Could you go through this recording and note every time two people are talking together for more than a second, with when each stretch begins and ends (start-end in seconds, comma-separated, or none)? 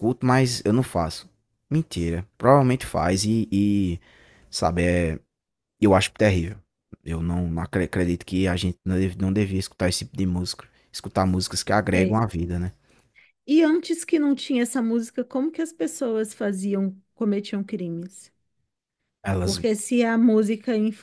none